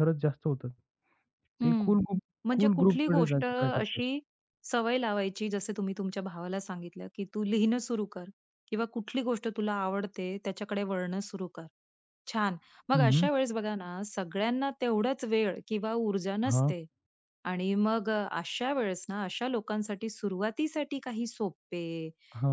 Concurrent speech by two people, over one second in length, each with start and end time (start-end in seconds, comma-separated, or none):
2.6-4.0